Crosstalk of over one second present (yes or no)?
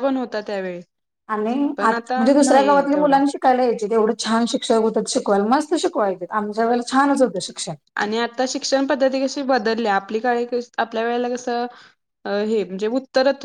yes